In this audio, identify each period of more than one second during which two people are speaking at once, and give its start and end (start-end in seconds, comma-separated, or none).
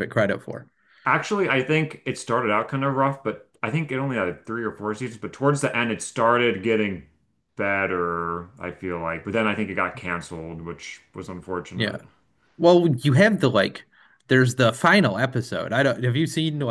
none